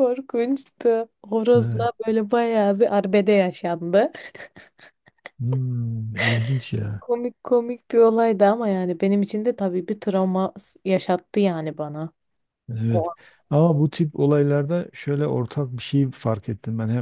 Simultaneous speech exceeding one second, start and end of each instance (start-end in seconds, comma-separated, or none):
none